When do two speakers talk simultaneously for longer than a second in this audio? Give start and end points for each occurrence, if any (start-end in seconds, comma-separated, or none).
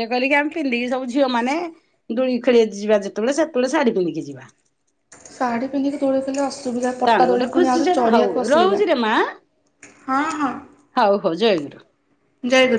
7.1-8.8